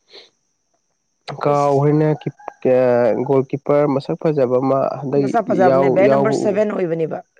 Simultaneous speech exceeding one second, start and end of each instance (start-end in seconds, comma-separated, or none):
5.3-6.7